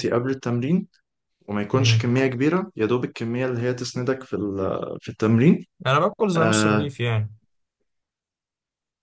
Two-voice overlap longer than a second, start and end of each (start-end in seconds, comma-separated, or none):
none